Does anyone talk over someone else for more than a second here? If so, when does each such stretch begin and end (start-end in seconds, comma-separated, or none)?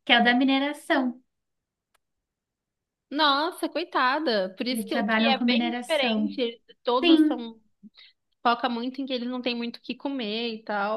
4.7-6.4